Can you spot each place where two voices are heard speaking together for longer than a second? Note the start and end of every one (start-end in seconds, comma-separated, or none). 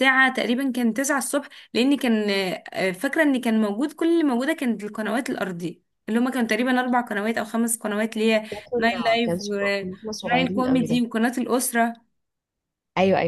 8.5-11.0